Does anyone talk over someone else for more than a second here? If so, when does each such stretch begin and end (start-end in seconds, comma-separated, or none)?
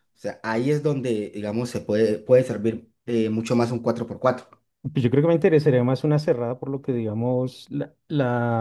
none